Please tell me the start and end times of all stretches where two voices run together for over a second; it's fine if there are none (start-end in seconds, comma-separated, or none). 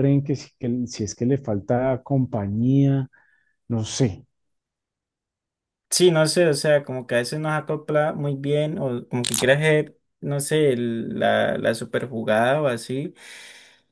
none